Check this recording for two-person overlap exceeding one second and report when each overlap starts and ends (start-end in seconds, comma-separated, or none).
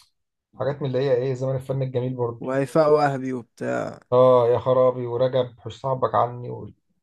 none